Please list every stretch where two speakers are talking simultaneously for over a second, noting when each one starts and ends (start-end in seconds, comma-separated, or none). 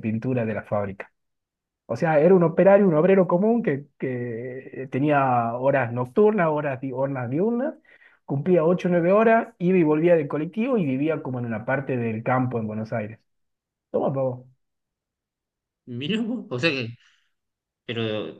none